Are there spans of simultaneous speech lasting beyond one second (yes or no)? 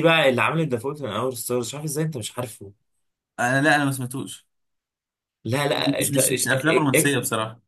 yes